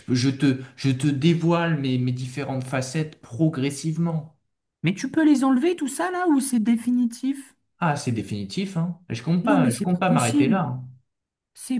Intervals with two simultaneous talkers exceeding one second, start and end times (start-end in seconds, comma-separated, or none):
9.4-10.7